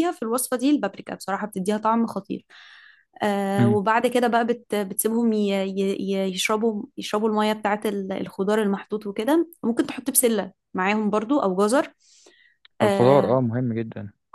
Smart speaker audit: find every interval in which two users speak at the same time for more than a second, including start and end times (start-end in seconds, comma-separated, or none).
none